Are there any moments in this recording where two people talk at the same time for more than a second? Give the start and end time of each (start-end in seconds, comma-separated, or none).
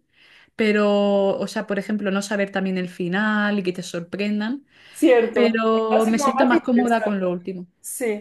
5.3-7.2